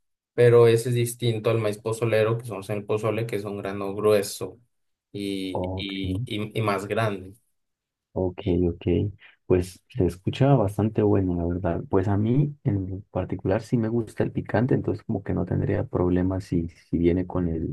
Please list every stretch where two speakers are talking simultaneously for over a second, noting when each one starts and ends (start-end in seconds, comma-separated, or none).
none